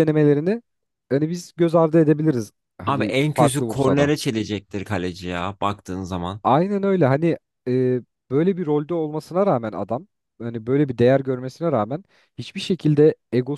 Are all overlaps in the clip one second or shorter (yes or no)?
no